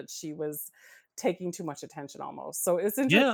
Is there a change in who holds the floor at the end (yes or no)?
yes